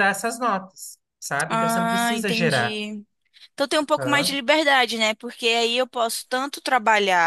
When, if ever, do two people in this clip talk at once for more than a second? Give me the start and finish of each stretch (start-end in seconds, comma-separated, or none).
1.5-2.8